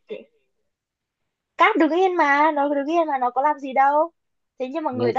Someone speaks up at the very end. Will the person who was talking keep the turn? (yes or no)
yes